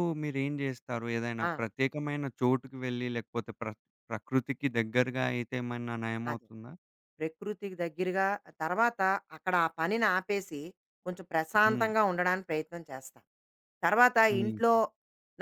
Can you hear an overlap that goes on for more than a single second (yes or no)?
no